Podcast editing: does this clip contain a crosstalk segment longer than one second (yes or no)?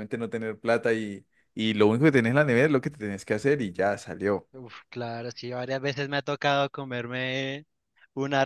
no